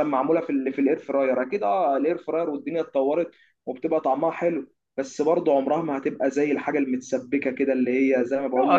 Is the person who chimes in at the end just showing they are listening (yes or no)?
no